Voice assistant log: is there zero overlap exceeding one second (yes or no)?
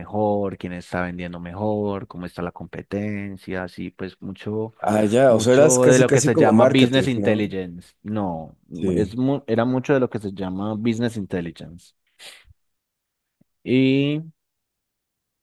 no